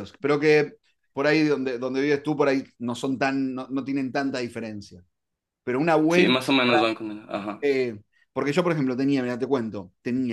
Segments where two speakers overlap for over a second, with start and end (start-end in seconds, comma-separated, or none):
none